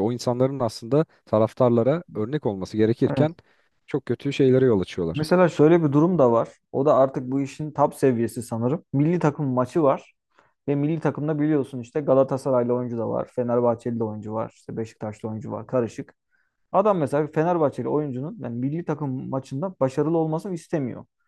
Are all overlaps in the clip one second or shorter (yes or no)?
yes